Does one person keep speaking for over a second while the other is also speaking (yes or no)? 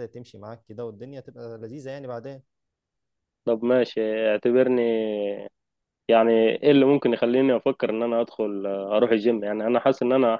no